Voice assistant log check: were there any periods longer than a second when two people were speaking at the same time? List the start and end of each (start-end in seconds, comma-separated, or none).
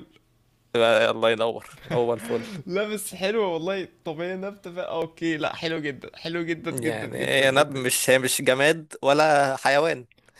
6.7-8.0